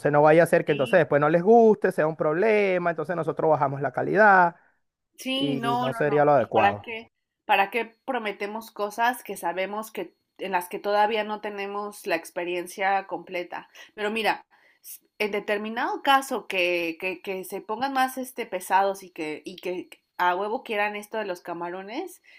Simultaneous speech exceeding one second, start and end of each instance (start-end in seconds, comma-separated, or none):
5.3-6.9